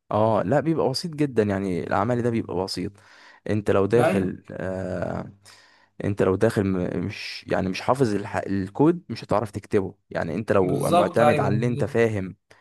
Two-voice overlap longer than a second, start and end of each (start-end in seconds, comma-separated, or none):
10.6-12.0